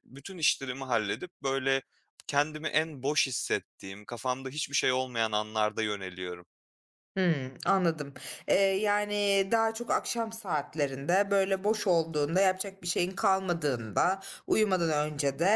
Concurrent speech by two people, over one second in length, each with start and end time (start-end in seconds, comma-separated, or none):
none